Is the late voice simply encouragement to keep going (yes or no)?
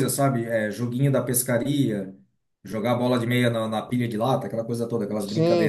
no